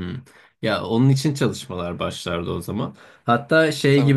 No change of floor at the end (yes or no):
yes